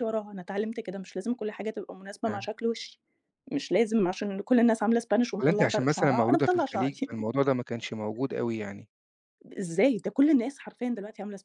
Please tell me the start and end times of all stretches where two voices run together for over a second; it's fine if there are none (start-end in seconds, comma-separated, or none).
5.4-7.1